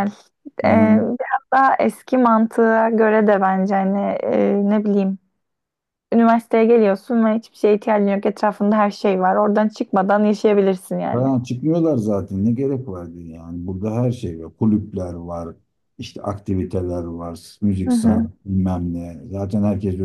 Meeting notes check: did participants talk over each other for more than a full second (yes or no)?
no